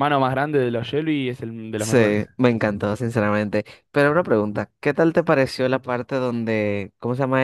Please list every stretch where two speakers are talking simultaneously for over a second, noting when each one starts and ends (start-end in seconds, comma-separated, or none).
none